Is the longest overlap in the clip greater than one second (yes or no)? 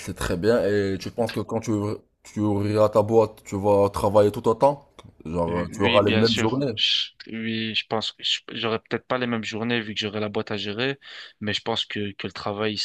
yes